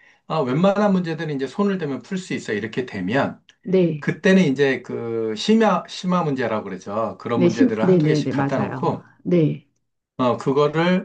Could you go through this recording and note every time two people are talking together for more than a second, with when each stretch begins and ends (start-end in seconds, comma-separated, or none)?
7.3-9.0